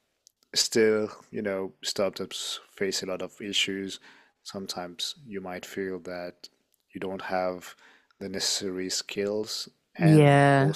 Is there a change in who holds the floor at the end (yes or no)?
no